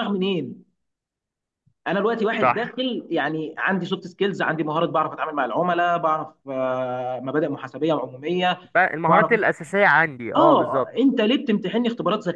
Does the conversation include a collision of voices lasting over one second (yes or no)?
no